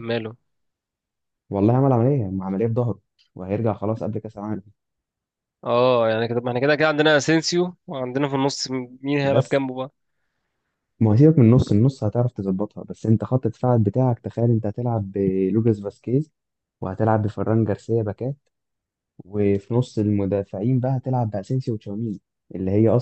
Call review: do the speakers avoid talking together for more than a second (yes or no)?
yes